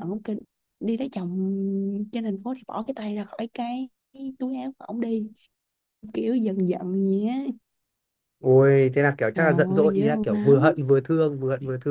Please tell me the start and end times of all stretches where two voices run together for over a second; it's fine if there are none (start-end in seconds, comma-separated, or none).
9.3-10.8